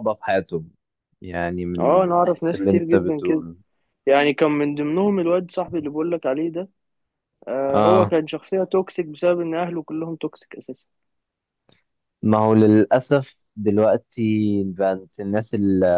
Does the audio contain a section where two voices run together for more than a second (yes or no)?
yes